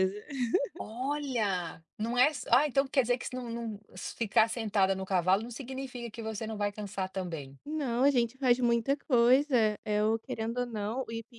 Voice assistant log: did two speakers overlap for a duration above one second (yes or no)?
no